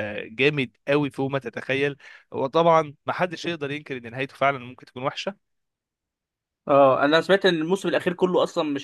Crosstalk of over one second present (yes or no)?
no